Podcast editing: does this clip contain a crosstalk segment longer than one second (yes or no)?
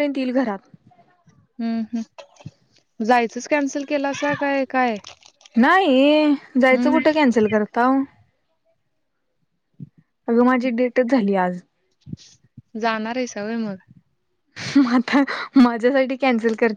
no